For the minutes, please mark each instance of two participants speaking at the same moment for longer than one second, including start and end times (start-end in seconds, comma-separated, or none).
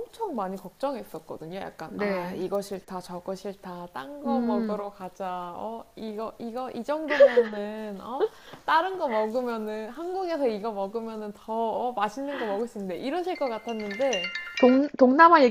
none